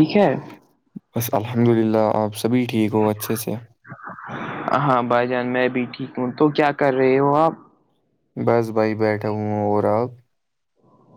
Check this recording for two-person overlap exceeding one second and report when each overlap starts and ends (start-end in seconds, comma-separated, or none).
none